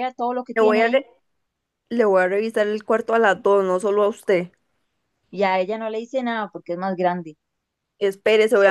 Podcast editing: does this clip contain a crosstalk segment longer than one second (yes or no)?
no